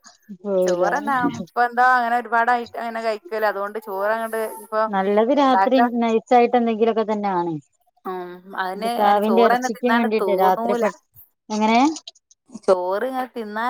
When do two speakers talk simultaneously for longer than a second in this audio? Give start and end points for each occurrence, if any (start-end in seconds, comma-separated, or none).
8.8-10.8